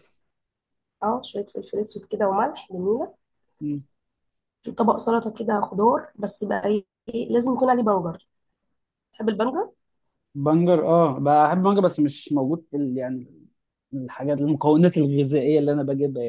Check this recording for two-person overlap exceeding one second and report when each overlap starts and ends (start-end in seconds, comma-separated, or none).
none